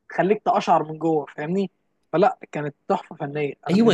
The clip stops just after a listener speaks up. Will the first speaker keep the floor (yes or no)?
no